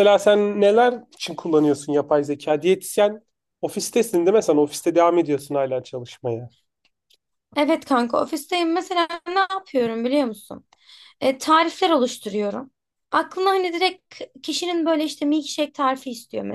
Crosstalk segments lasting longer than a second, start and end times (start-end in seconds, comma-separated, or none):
none